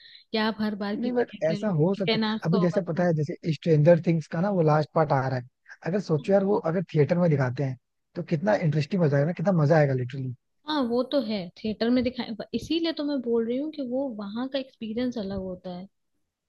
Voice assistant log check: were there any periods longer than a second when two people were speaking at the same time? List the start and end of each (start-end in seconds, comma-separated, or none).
1.0-3.1